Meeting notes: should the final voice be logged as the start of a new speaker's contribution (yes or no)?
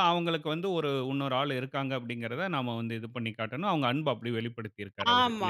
yes